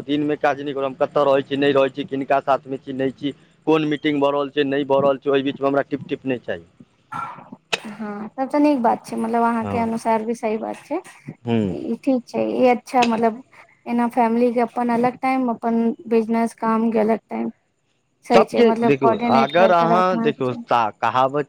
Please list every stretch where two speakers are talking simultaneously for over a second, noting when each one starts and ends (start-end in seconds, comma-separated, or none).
18.3-20.6